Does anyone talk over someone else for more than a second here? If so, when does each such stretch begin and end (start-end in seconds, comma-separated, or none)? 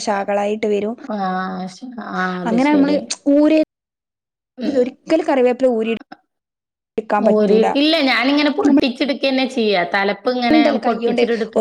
none